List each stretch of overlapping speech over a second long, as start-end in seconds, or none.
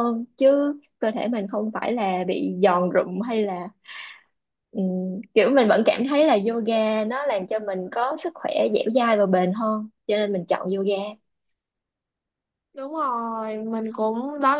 none